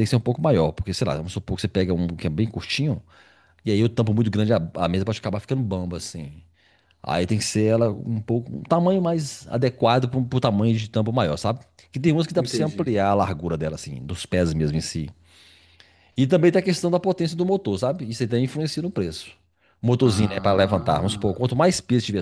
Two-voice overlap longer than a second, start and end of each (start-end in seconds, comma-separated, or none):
20.0-21.4